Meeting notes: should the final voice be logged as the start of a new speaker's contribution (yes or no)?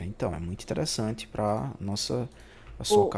no